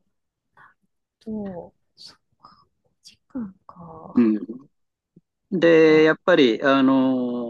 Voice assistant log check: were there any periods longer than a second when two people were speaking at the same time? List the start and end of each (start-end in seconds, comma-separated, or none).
none